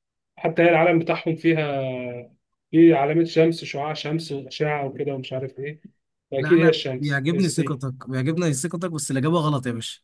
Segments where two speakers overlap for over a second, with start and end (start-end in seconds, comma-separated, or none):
6.4-7.8